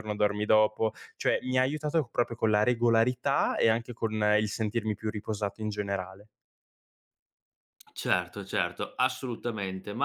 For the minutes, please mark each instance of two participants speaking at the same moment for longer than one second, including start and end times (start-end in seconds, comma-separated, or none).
none